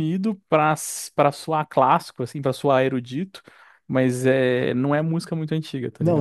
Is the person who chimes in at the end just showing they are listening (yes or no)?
no